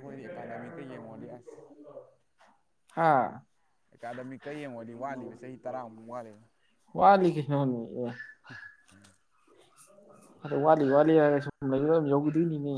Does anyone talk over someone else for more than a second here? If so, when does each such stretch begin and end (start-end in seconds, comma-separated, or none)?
none